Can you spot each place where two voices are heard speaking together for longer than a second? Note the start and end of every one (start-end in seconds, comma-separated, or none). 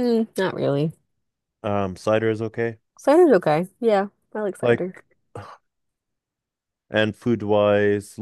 none